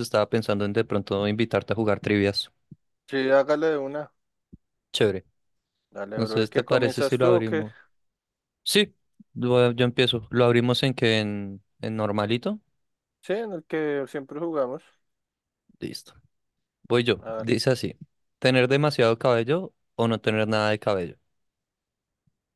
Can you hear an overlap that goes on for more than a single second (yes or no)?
yes